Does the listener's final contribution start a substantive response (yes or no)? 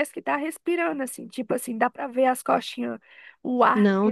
no